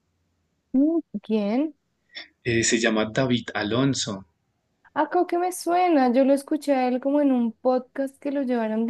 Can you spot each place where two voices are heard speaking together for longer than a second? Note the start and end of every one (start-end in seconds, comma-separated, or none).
none